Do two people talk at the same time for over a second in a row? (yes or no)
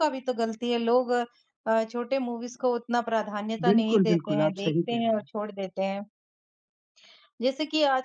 yes